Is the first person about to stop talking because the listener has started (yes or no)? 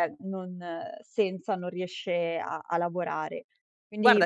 yes